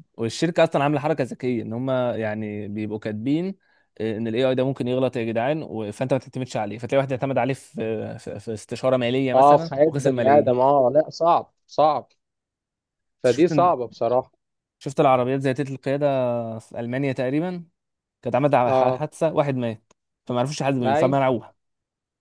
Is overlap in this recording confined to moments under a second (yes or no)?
no